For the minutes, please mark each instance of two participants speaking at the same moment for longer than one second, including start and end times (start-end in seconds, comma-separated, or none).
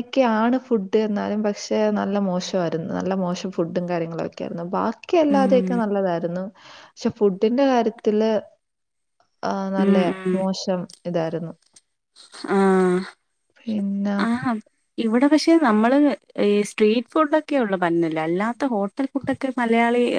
none